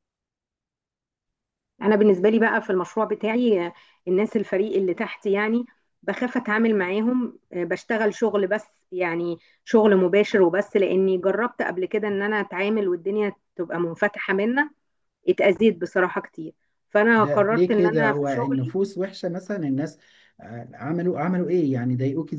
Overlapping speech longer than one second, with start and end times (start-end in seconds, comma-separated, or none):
17.2-18.7